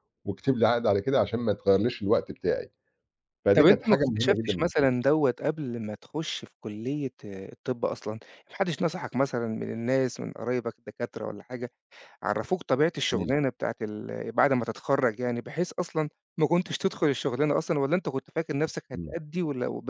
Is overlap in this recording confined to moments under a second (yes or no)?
no